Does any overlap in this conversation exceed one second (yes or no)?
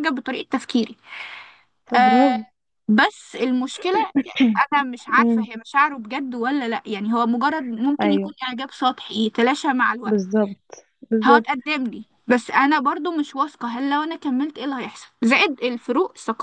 no